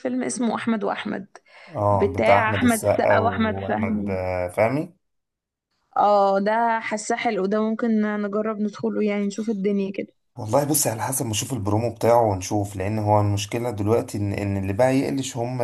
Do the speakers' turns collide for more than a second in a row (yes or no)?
yes